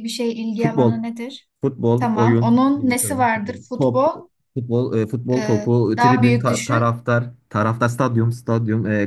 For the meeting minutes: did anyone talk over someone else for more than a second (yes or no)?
yes